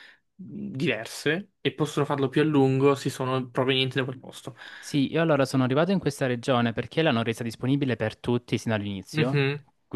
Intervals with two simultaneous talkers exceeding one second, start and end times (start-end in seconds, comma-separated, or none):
none